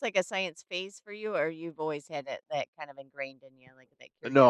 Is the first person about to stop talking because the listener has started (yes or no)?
yes